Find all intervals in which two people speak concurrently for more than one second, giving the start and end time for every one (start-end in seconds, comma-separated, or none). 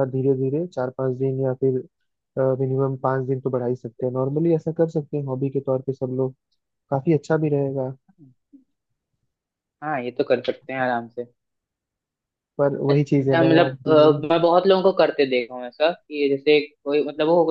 12.9-14.3